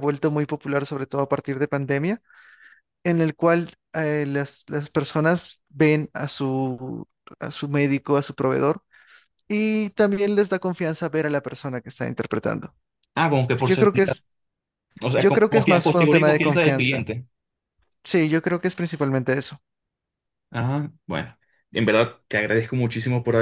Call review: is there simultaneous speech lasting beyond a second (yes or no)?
yes